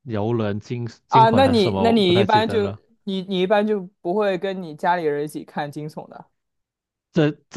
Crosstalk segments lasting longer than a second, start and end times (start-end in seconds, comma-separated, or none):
1.1-2.7